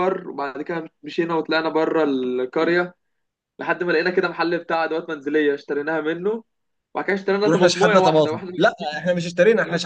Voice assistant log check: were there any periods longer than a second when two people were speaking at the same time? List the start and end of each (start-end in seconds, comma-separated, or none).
7.4-9.0